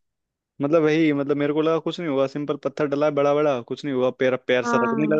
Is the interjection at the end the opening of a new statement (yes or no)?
no